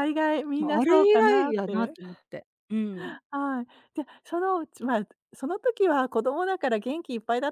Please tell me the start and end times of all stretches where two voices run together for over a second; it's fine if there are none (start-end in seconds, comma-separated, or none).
0.6-1.9